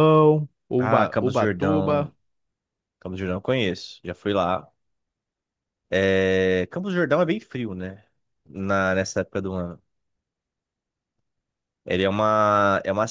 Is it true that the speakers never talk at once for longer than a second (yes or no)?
no